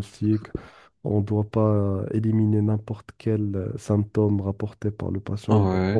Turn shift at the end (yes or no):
yes